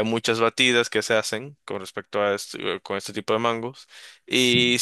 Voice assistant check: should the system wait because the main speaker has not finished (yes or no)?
yes